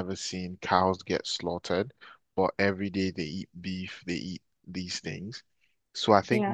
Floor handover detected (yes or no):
no